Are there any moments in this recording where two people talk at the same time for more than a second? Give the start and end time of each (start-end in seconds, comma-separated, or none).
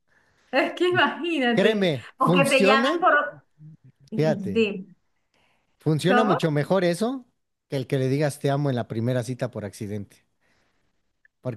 1.5-3.0